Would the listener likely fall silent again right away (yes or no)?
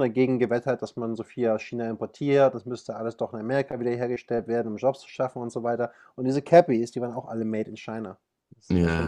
yes